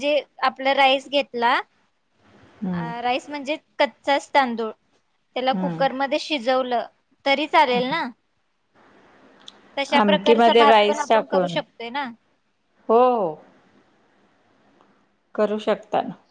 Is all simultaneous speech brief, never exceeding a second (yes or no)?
no